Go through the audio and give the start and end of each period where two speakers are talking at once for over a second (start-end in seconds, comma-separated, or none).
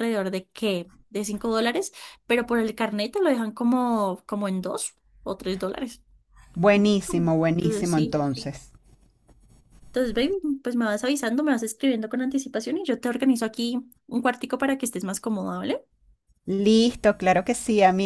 6.7-8.2